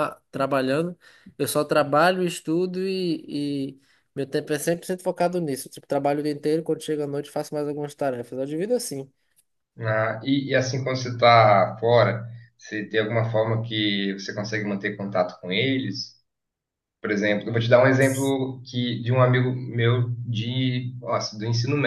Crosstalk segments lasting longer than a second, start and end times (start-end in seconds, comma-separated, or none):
none